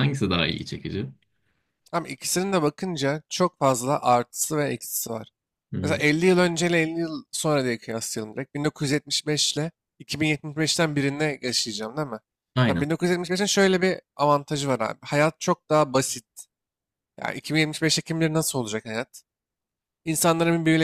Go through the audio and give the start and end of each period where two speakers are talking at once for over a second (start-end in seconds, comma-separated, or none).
none